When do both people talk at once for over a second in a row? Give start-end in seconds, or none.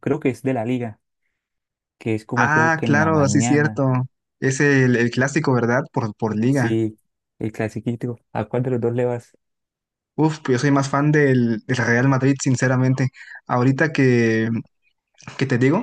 2.3-3.8